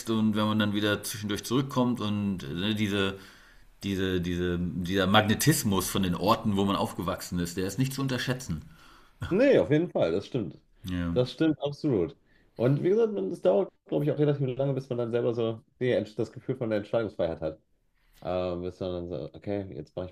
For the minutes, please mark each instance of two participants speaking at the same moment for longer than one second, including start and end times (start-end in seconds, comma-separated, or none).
none